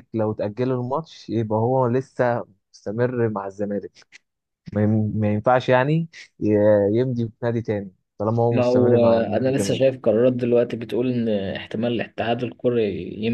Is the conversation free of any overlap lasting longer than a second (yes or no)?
no